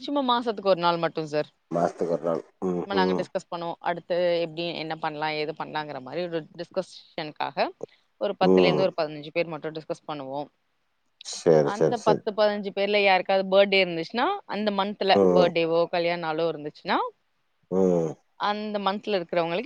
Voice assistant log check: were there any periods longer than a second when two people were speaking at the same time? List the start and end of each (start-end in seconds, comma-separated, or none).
none